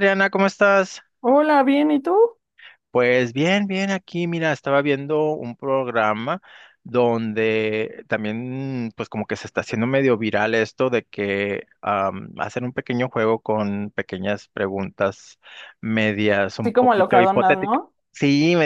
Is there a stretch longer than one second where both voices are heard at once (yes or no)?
yes